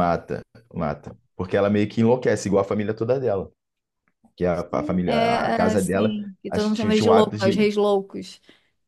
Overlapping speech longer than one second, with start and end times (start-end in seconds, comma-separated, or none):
4.5-7.7